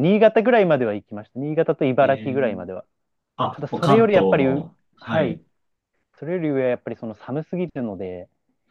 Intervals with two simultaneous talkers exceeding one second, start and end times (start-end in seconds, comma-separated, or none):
3.5-5.4